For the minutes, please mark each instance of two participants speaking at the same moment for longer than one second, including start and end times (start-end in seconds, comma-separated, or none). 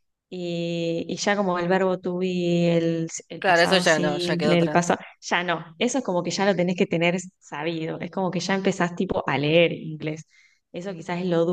3.4-4.9